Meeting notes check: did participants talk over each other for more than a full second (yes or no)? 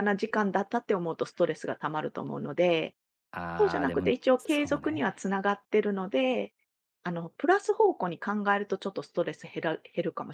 yes